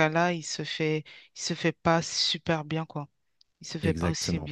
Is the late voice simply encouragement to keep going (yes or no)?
yes